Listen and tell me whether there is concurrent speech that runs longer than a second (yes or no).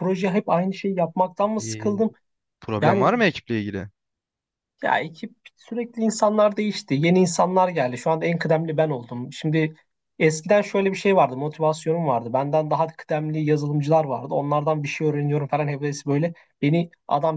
no